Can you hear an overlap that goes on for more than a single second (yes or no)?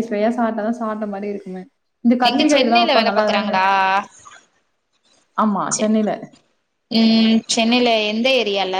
yes